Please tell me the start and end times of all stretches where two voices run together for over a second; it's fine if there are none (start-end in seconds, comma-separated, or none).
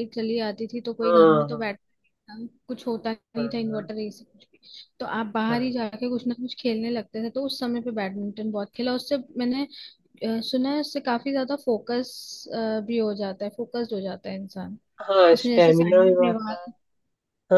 15.3-16.7